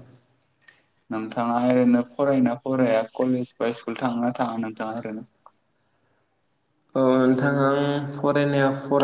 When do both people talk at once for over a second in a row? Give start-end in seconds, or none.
none